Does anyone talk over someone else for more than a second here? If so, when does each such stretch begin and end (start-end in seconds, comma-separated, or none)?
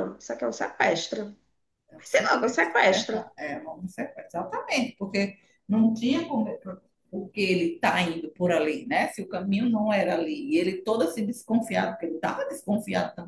2.0-3.3